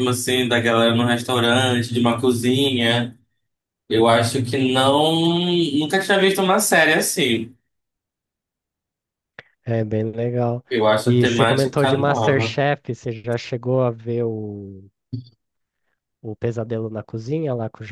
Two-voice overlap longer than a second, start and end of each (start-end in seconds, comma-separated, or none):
11.1-12.6